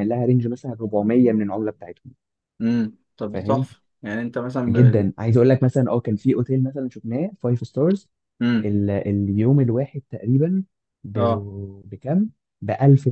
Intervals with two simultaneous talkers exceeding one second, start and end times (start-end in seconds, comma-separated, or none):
none